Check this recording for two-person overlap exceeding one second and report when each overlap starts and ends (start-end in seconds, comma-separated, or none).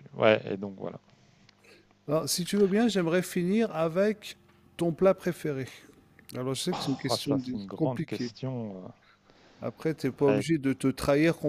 7.1-8.3